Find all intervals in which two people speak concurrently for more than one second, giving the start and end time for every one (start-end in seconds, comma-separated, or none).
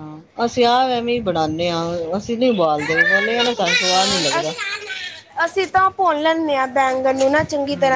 3.2-4.5